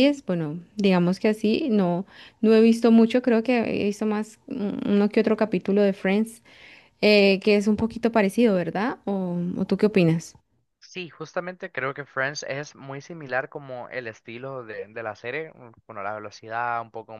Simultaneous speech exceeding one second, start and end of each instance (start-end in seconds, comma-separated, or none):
none